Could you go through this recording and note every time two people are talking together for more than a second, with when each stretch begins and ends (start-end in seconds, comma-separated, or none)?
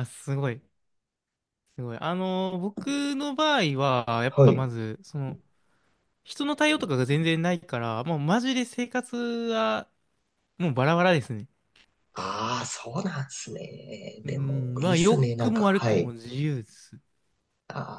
14.2-16.1